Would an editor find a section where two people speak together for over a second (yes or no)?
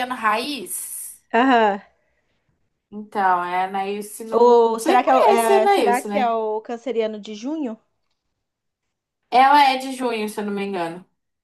yes